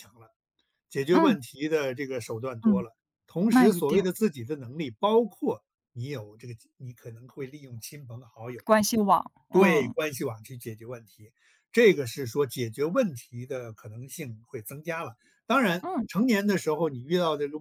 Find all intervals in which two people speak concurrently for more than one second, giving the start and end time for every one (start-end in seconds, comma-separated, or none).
none